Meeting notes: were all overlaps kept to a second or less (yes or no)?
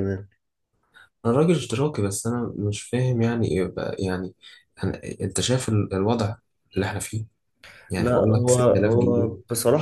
no